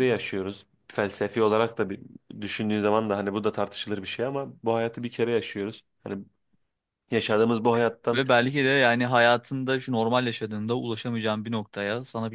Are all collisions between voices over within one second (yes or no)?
yes